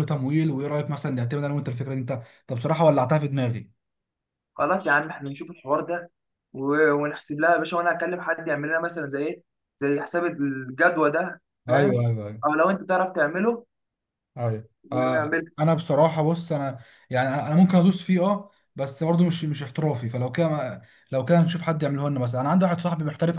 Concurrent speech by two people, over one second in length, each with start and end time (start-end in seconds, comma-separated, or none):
none